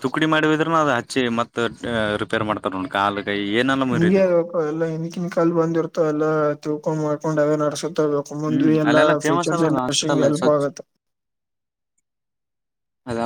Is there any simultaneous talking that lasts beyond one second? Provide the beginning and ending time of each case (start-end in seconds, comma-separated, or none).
8.5-10.7